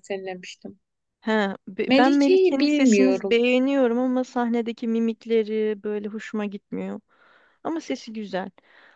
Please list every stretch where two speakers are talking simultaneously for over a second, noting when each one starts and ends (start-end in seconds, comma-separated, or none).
1.9-3.4